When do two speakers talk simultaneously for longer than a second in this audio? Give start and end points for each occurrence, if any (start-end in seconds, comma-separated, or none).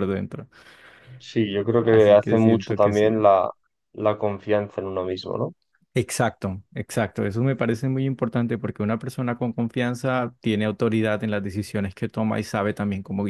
1.8-3.3